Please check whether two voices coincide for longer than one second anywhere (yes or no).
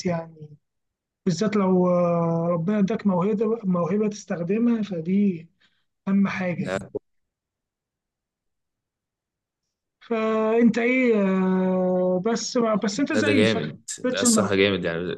yes